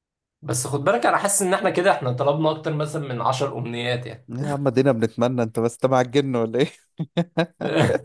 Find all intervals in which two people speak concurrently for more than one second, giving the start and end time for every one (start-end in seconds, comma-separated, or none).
none